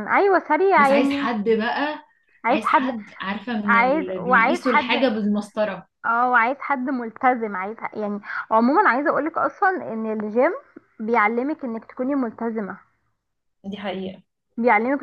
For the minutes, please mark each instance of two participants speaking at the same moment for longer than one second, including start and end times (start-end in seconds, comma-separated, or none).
3.6-4.9